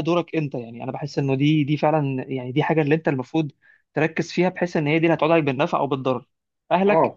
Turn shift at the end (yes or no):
no